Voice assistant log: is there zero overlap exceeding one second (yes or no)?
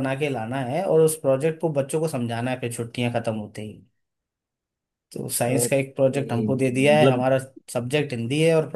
no